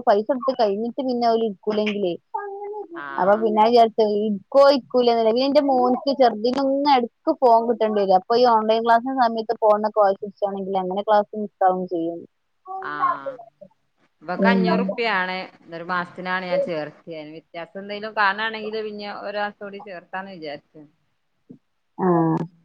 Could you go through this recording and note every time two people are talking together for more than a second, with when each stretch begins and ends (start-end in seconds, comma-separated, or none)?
none